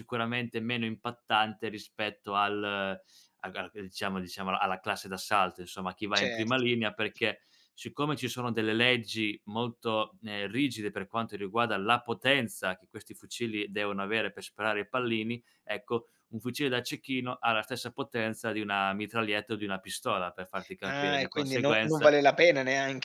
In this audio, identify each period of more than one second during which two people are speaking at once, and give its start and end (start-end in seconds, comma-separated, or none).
20.9-22.2